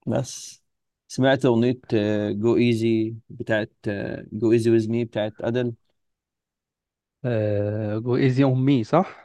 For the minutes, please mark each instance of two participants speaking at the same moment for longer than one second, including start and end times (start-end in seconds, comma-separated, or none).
none